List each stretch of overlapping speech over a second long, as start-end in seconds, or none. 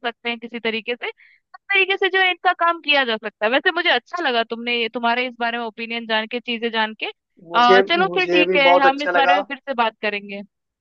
7.5-9.4